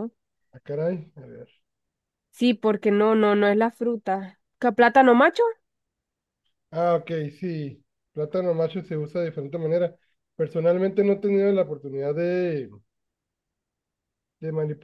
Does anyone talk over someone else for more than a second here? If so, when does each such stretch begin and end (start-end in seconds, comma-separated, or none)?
none